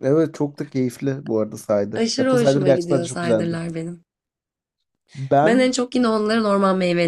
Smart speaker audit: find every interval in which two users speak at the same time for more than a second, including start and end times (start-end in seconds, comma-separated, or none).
1.9-3.6